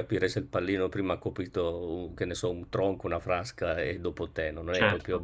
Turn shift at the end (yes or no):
yes